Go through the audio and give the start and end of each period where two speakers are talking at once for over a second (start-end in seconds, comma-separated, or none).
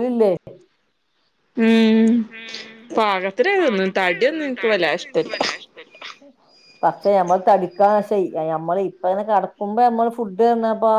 3.6-5.3